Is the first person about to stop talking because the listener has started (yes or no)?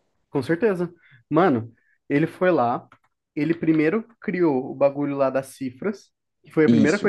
no